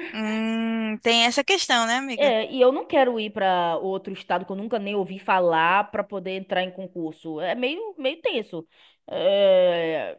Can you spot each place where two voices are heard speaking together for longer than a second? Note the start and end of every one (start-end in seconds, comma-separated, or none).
none